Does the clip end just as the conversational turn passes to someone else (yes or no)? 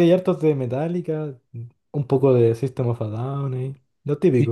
yes